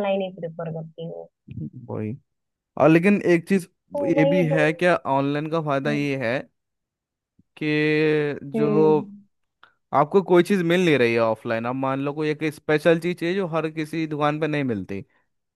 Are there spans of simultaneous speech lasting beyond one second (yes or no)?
no